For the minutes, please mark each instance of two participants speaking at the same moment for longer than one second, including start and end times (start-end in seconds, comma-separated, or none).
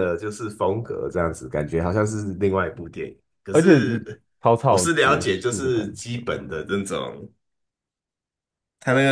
4.6-6.4